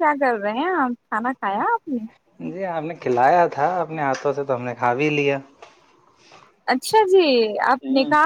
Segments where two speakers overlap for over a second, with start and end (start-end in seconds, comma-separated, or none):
none